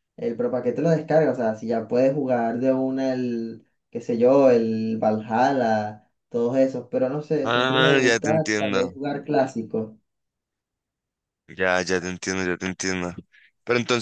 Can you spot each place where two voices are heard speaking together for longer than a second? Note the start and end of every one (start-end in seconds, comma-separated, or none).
7.4-8.9